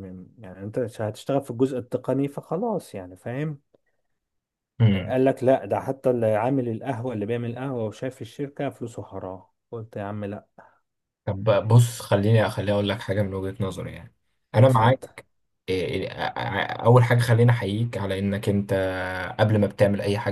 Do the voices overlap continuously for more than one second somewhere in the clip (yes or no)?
no